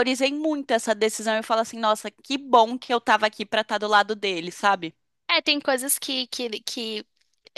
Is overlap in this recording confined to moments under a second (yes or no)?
yes